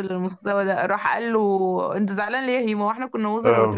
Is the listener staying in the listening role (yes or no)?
no